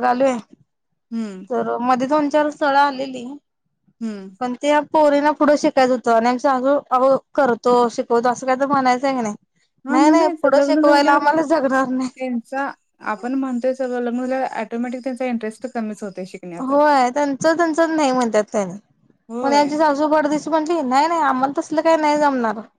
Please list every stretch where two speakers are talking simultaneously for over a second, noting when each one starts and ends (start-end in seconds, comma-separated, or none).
9.9-11.2